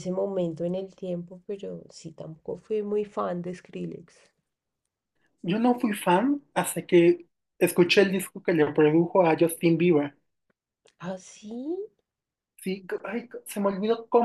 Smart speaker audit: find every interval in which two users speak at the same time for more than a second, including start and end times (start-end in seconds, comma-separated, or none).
none